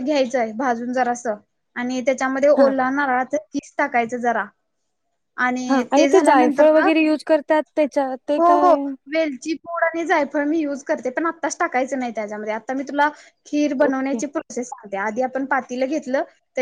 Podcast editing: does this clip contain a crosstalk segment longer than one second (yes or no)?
no